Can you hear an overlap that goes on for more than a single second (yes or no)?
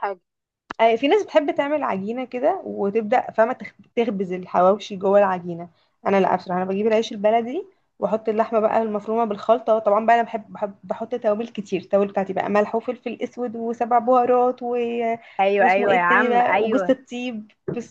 yes